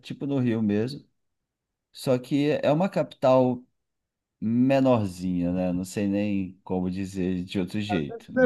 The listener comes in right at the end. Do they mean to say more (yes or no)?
yes